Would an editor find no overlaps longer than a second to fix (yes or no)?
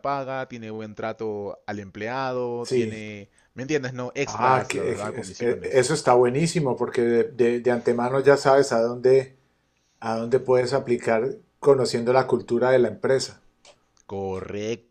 no